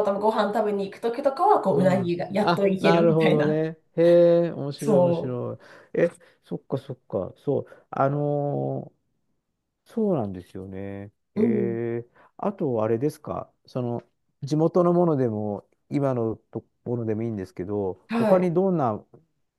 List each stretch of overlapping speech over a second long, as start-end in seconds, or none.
1.7-3.6